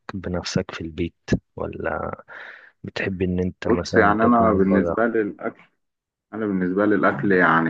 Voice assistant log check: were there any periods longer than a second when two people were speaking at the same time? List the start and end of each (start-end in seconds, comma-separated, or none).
3.6-5.0